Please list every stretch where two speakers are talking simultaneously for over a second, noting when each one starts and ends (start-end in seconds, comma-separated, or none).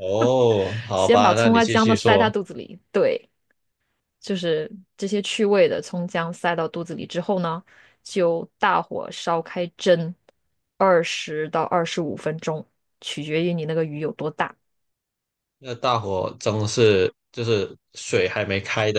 0.9-2.3